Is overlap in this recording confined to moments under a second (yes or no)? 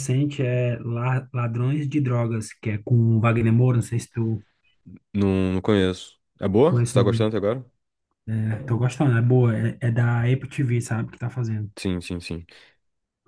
yes